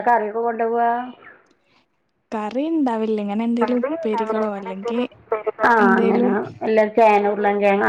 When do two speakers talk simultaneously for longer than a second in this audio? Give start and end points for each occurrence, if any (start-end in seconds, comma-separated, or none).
3.6-5.0